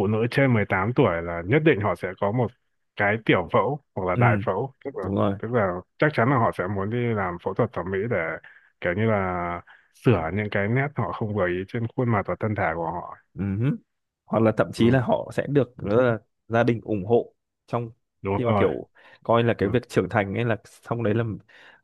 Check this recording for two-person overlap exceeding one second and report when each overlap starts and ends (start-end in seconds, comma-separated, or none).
none